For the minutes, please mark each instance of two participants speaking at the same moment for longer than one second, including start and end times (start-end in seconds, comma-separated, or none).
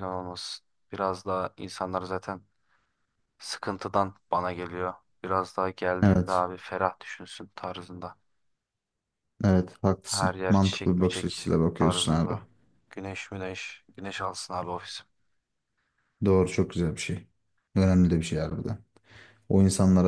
10.0-12.4